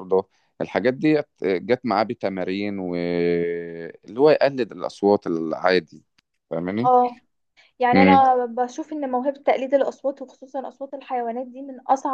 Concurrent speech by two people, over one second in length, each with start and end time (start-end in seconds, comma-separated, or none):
none